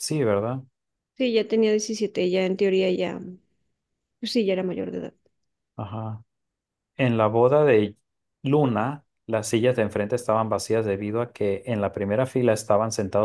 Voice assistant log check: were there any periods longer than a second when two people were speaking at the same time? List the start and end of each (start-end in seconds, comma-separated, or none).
none